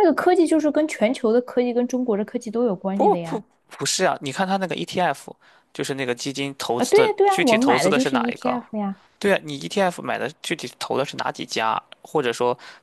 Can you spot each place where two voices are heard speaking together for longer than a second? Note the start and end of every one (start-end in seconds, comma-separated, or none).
6.8-8.6